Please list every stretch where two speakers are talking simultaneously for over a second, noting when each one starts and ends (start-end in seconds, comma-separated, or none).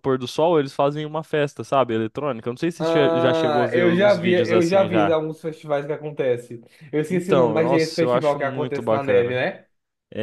2.8-5.2, 7.1-9.4